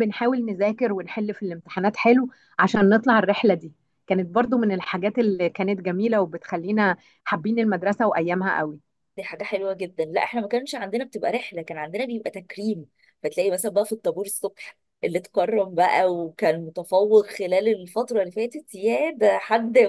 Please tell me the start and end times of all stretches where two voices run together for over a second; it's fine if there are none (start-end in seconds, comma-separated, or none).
none